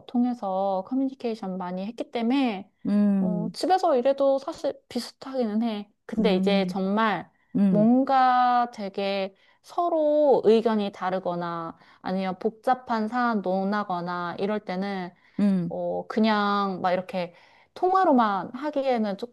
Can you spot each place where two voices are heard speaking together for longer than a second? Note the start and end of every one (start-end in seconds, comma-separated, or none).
none